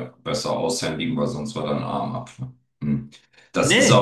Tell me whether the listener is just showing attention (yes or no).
no